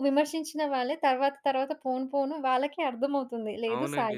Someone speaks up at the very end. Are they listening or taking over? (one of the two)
taking over